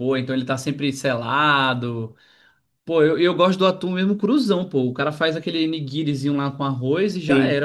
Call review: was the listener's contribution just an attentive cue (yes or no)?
no